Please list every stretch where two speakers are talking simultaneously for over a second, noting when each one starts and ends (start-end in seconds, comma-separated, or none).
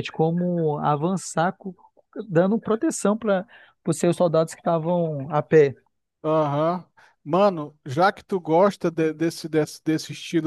none